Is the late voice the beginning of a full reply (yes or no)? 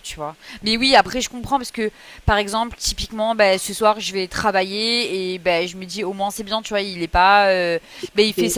no